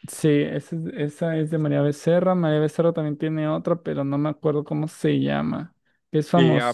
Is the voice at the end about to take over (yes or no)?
yes